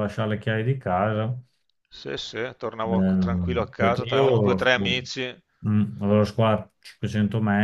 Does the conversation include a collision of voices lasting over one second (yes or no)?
yes